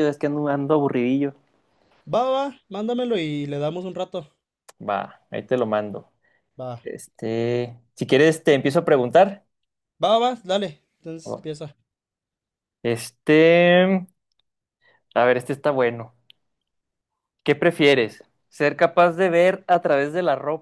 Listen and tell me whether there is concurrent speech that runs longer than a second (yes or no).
no